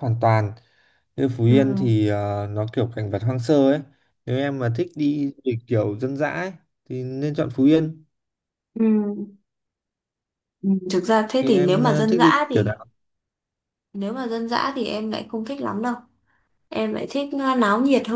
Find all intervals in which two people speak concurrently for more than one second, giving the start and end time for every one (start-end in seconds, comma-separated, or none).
11.4-12.6